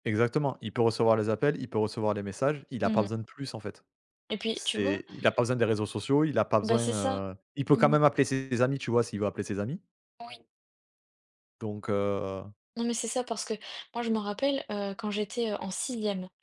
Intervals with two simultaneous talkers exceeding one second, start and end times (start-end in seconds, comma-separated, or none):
none